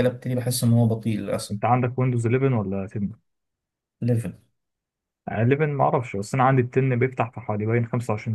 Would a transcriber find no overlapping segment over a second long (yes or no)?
yes